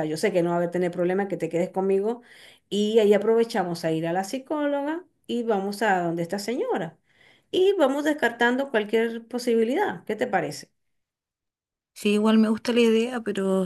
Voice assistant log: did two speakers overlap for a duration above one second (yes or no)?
no